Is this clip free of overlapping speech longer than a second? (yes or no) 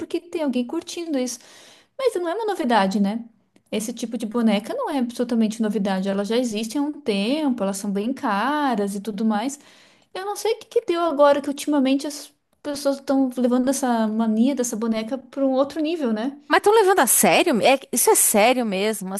yes